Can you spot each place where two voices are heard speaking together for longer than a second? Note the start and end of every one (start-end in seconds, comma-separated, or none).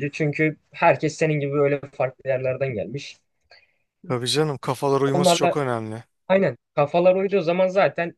none